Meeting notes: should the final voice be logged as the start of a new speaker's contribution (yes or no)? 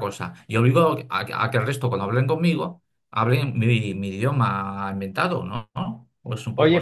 yes